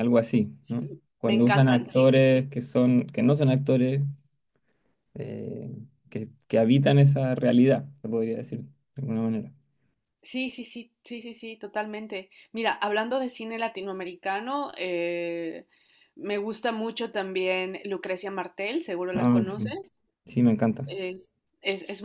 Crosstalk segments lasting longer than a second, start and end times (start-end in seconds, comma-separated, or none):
0.6-2.5